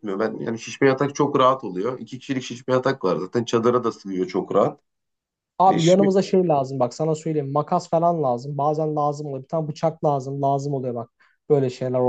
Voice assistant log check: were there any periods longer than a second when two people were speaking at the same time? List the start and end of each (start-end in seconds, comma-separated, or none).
none